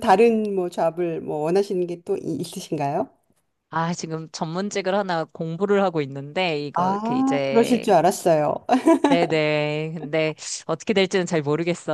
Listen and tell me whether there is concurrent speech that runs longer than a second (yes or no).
yes